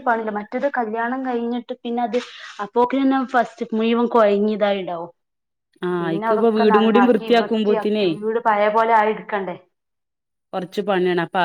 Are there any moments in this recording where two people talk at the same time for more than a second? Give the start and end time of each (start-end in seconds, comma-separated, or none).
6.0-8.0